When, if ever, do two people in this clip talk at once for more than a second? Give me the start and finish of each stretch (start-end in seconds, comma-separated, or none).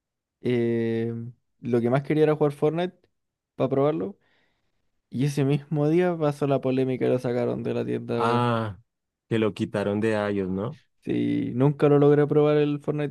none